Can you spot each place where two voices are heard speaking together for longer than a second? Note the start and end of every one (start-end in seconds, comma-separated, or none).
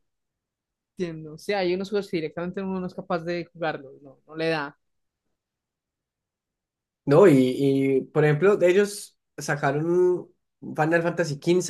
none